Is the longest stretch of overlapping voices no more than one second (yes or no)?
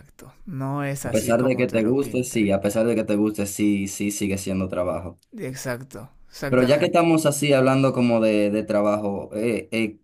no